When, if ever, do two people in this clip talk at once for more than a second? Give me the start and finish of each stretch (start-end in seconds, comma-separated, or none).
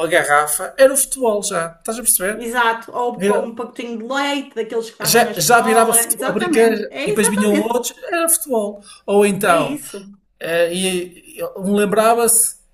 5.0-7.8